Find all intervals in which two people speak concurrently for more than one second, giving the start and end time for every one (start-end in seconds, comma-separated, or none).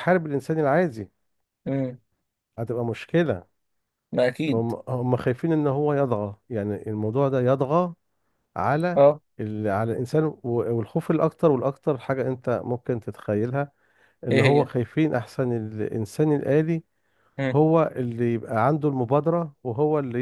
none